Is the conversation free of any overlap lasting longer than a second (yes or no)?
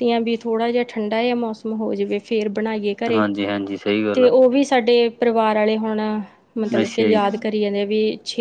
yes